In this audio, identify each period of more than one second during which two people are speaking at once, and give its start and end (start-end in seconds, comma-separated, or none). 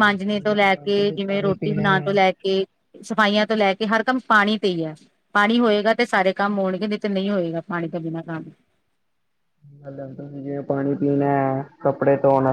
0.5-2.2